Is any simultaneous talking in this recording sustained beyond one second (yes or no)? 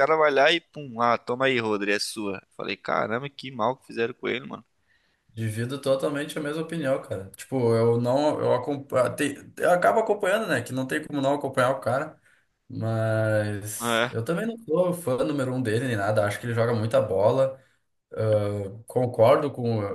no